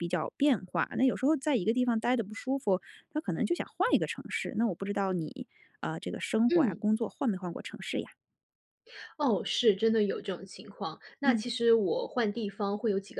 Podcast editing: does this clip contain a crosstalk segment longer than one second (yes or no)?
no